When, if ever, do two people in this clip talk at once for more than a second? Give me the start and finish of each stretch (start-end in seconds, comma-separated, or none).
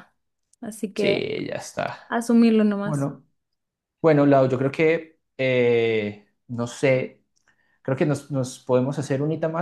none